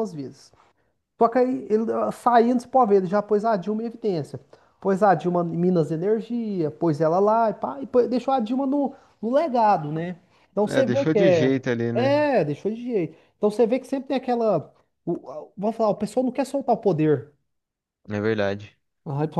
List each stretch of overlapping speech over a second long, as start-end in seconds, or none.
10.7-12.3